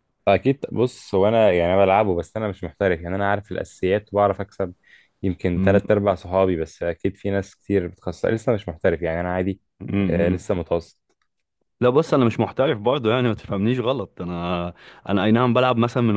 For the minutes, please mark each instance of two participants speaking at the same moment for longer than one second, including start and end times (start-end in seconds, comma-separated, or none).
none